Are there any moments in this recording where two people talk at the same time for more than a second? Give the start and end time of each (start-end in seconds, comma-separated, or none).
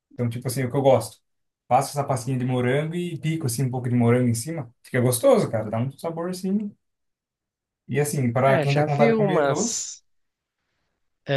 8.4-9.9